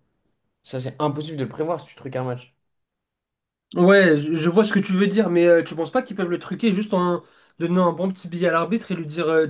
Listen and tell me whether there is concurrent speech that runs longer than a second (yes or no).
no